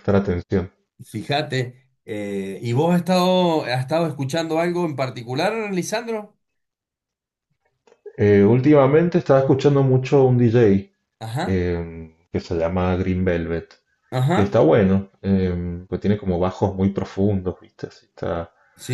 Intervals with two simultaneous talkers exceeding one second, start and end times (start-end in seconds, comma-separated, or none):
none